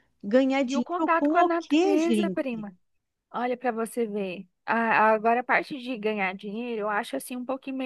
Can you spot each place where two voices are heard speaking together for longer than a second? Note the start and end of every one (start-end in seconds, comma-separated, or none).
0.7-2.6